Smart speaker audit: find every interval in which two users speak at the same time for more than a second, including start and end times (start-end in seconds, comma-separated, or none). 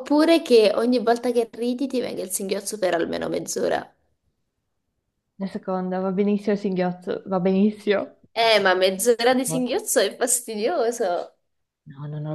none